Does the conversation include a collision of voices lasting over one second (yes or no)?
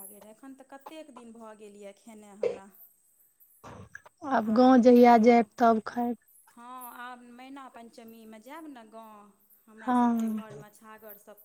no